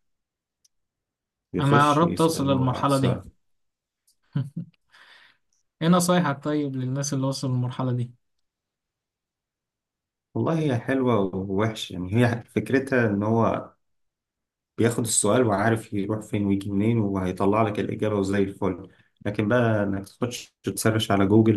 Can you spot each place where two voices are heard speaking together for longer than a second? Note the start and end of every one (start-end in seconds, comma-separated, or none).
1.6-3.2